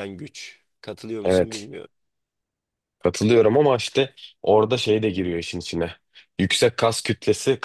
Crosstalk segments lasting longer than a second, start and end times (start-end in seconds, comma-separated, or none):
none